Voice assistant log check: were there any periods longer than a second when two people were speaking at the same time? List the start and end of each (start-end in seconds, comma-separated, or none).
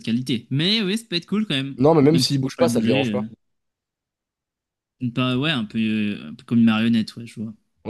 1.8-3.2